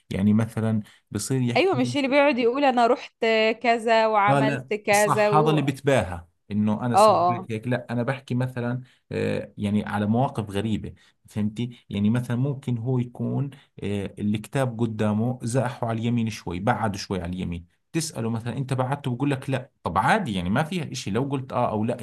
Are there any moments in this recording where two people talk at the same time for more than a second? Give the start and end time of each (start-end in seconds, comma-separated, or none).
4.3-5.7